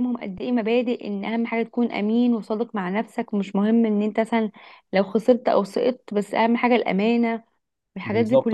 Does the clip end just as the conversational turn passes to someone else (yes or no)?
yes